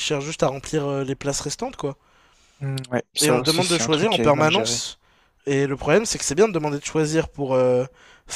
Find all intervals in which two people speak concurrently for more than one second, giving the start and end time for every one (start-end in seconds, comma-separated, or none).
3.2-4.9